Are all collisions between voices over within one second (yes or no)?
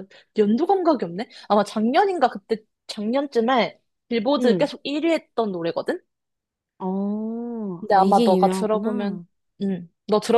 no